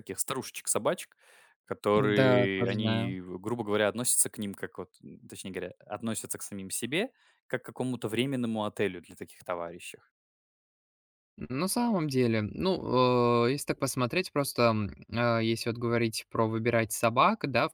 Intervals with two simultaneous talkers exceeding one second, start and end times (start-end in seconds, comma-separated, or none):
1.9-3.1